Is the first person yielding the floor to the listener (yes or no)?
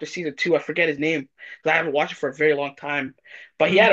no